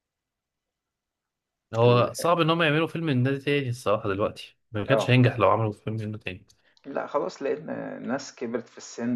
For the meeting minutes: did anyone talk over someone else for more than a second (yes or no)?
no